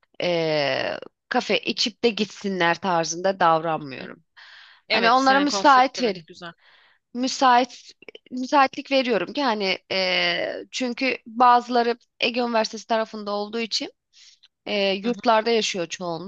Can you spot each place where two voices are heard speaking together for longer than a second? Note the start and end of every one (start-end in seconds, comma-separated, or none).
4.9-6.2